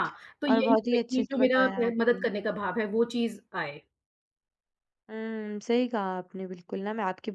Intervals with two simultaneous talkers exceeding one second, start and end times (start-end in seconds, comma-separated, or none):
0.5-2.2